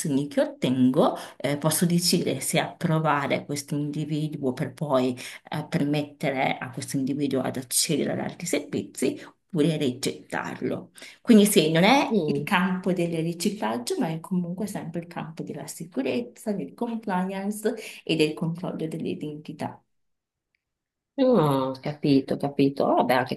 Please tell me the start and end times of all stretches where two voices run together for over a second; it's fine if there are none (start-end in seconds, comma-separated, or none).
none